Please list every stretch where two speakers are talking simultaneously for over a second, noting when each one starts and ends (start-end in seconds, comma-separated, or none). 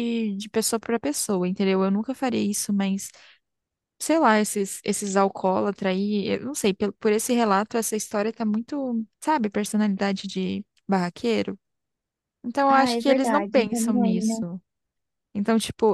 12.7-14.3